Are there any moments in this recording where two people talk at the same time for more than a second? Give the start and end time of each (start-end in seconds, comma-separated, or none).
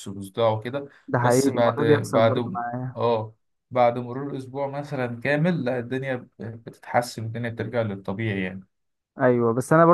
1.1-3.0